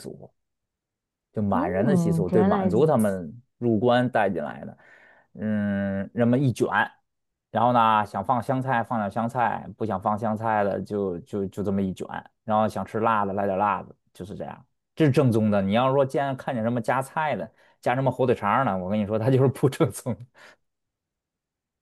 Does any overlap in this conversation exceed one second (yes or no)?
yes